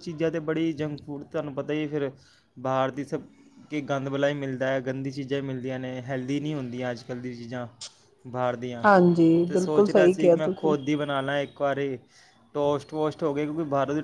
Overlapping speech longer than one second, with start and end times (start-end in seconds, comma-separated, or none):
8.8-10.7